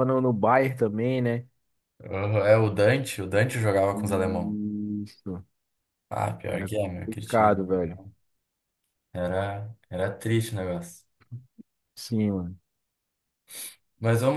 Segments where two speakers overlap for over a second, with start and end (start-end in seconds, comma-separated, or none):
6.5-7.8